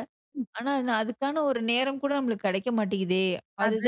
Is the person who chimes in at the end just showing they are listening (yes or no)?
no